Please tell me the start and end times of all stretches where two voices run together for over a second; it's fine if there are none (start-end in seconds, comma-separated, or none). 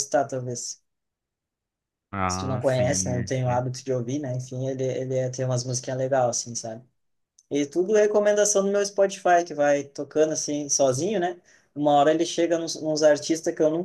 2.3-3.6